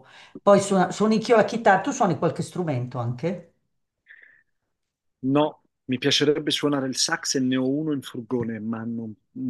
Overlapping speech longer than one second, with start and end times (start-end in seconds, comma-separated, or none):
none